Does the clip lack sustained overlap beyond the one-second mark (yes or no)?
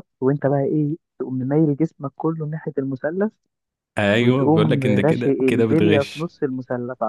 no